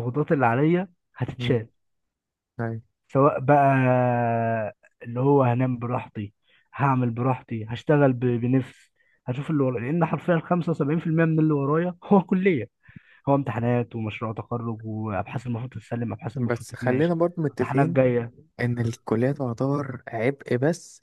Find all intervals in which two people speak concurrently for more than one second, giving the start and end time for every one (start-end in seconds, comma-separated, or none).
16.4-18.0